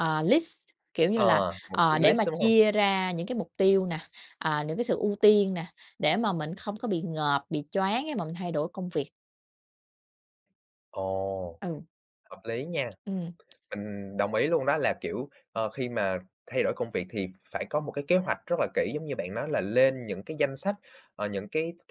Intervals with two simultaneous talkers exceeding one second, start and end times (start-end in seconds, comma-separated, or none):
1.1-2.5